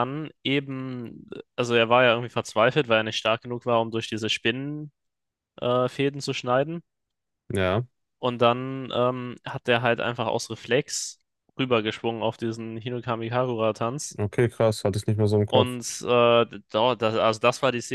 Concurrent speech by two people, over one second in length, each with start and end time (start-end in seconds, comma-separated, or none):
none